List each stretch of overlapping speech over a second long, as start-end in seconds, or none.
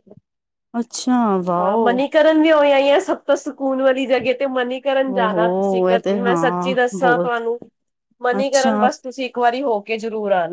5.3-7.4